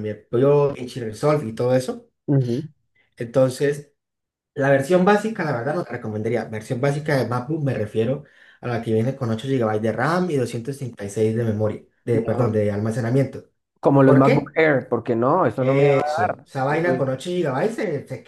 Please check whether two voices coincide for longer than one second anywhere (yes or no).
yes